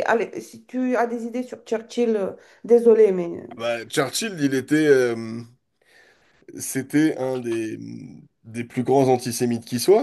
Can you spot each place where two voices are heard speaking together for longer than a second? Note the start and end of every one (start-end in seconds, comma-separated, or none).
none